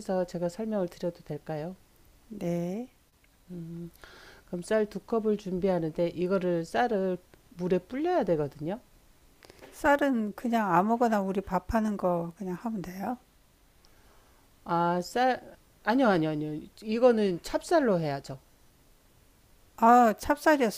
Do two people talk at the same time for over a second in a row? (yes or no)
no